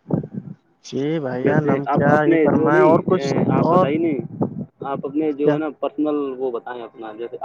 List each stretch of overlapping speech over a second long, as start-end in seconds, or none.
1.4-3.9